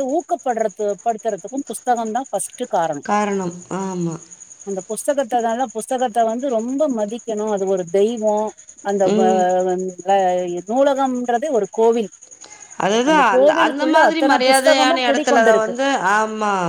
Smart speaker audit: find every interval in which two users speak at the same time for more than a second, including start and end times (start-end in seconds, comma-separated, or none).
13.3-15.7